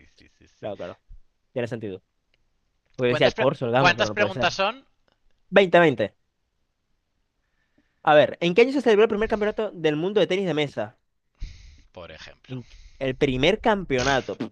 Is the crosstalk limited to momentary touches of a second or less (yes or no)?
no